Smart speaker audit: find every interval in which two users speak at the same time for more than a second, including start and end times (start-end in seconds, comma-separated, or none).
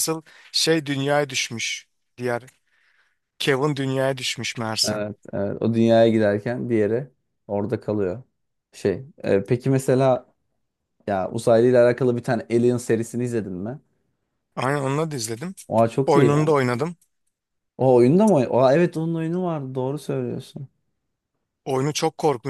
none